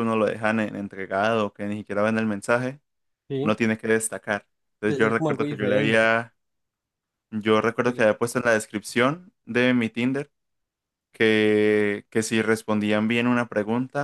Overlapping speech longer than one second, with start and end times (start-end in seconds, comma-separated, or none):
4.9-6.1